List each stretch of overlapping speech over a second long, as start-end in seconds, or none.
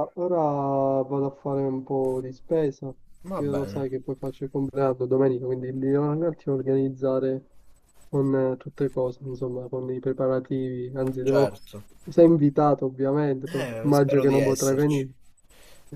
13.5-15.1